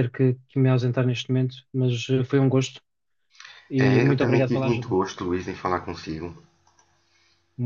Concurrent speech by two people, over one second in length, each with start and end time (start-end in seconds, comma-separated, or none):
3.8-5.0